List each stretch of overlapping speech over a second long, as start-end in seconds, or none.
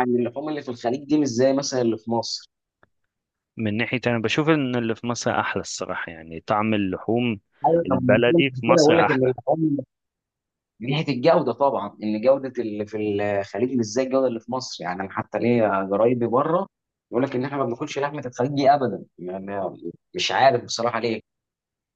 7.8-9.3